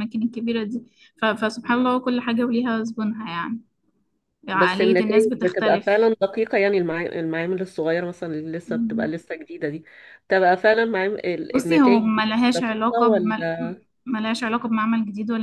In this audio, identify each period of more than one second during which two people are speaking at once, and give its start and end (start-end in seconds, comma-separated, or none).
4.5-6.1, 11.5-13.4